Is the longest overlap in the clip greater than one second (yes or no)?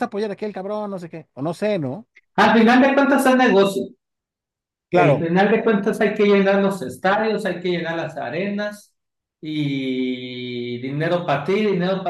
no